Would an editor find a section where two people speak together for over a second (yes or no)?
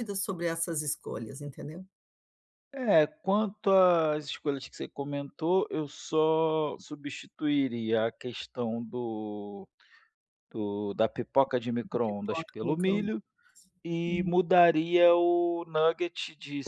yes